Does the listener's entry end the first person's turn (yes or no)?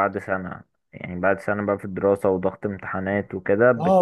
yes